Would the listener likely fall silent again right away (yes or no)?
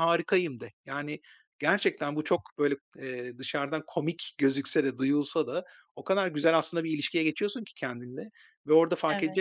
yes